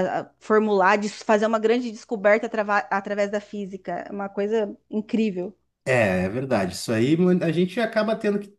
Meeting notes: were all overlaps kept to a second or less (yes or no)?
yes